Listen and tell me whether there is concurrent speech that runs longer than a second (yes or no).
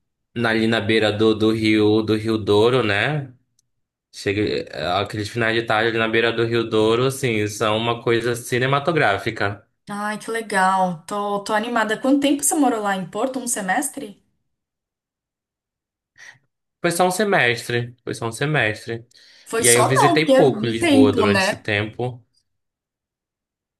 yes